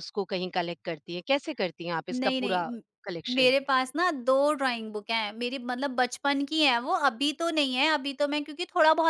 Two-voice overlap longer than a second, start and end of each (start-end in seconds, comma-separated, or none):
none